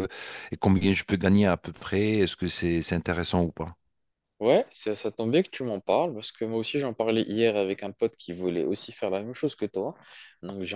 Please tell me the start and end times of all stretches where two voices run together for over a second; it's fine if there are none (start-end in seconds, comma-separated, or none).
none